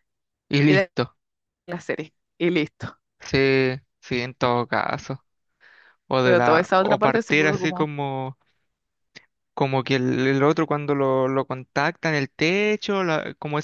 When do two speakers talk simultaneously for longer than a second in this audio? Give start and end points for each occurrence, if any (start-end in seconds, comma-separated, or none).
6.2-7.9